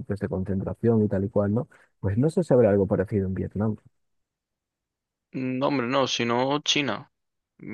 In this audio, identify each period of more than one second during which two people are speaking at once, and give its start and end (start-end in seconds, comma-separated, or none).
none